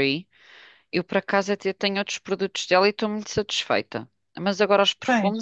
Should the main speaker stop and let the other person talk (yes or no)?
no